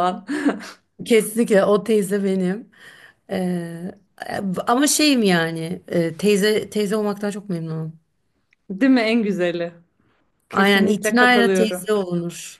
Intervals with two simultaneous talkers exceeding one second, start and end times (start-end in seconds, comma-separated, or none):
10.5-11.8